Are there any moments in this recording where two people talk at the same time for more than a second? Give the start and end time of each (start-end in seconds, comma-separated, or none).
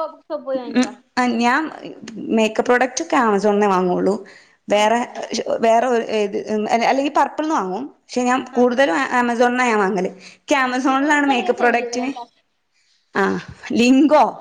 10.8-12.1